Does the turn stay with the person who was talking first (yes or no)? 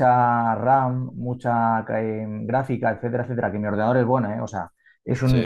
yes